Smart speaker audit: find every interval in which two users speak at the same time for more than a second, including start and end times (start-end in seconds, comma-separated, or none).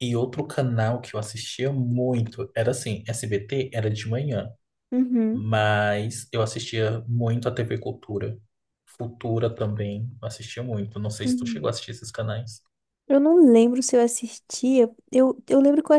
none